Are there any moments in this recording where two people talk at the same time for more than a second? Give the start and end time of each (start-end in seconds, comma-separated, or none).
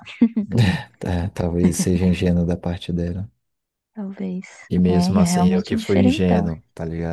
4.9-6.5